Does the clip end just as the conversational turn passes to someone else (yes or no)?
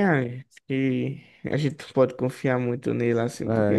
yes